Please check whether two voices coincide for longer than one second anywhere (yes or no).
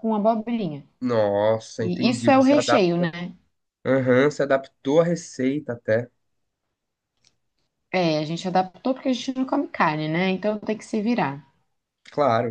yes